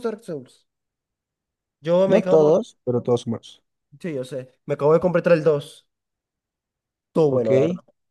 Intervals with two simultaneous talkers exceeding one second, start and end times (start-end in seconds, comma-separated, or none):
none